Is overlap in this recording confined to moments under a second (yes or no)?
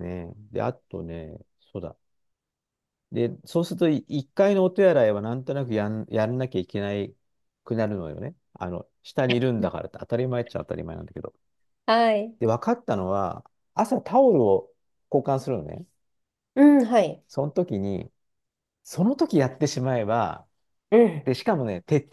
yes